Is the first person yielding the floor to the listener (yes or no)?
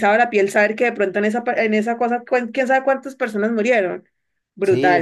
yes